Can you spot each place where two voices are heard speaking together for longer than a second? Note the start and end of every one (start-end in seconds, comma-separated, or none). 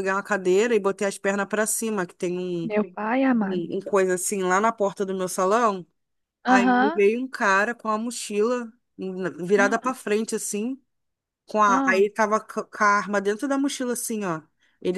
none